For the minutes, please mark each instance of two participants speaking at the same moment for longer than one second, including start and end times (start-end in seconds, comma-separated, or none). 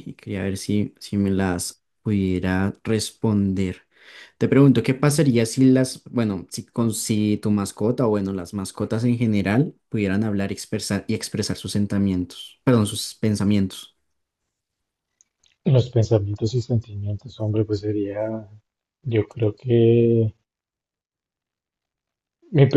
none